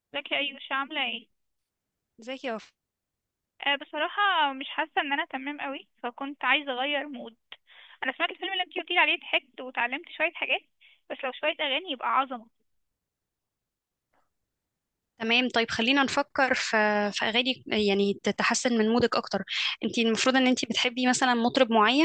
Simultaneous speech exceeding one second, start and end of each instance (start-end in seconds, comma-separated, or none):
none